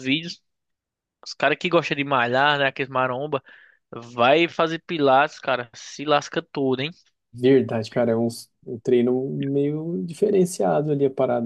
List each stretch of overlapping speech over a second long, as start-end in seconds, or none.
none